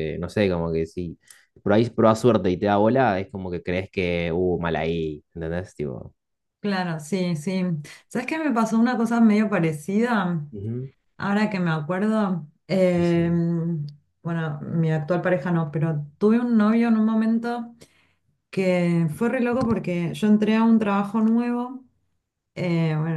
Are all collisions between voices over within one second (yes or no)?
yes